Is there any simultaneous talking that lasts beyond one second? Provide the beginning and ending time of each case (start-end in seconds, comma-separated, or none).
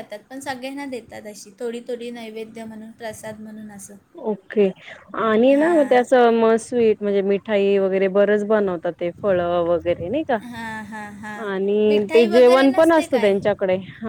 11.9-13.3